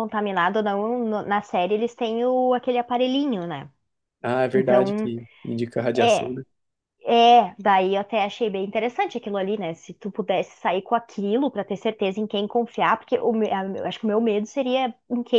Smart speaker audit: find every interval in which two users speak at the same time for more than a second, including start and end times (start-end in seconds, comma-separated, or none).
none